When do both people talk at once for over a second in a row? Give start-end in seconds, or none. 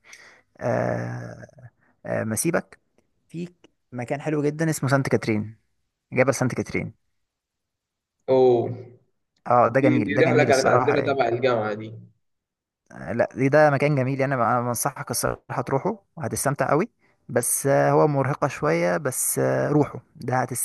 9.8-11.2